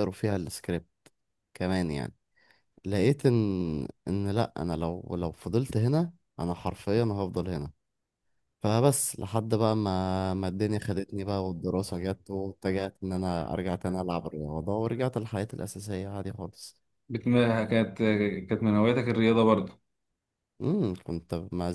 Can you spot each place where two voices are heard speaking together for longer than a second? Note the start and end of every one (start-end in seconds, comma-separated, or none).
none